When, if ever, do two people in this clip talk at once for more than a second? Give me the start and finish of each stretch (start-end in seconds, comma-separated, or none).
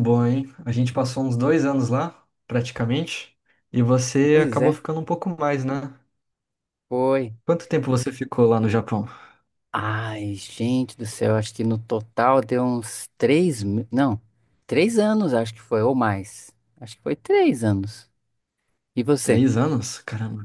none